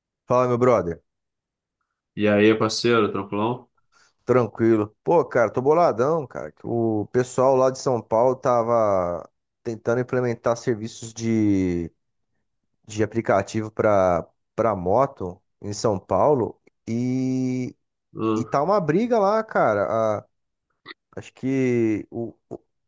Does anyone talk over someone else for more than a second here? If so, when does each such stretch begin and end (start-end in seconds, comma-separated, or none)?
none